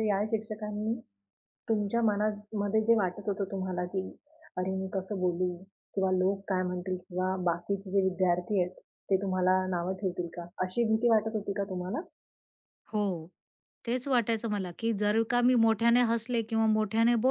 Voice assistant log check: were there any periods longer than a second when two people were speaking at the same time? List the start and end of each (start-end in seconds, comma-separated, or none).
none